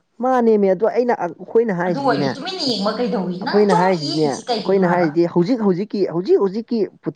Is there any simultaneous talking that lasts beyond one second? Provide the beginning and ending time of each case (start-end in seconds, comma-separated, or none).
3.4-5.1